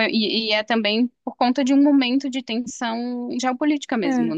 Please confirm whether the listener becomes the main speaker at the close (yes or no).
yes